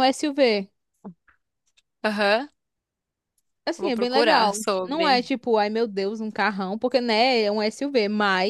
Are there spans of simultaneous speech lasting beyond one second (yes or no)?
yes